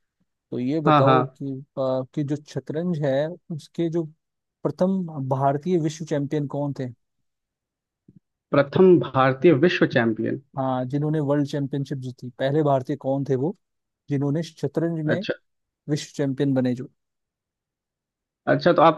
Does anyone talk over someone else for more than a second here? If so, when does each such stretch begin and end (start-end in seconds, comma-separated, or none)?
none